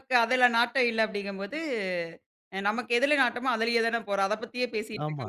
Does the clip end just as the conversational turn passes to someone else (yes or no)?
no